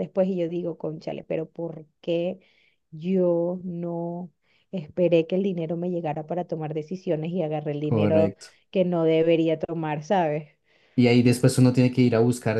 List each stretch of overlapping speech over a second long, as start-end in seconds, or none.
none